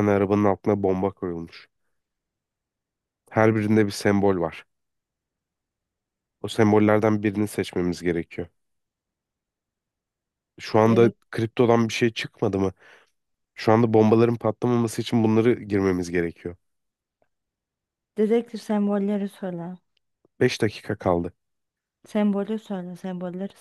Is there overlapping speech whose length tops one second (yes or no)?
no